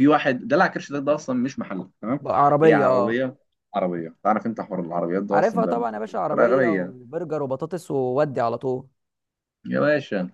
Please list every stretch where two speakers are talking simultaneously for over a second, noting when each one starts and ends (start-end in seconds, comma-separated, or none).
5.3-6.9